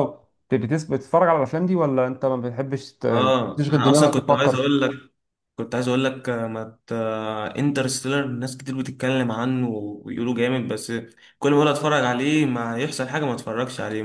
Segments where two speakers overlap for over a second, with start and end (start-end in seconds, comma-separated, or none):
3.1-4.7